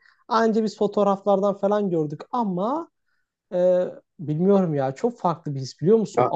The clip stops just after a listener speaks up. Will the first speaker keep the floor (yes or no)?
yes